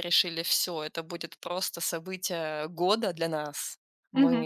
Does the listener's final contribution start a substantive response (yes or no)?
yes